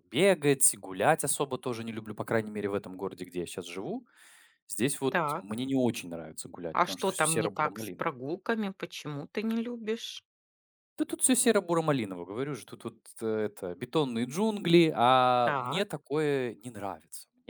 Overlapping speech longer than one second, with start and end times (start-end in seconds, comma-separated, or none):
6.7-8.1